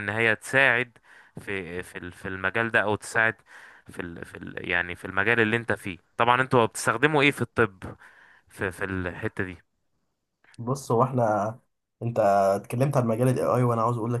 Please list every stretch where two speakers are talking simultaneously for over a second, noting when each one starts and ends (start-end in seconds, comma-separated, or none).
none